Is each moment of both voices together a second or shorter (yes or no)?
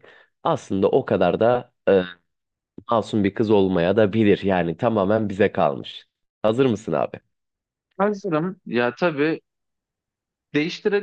yes